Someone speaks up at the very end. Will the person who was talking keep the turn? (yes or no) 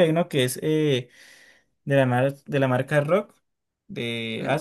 no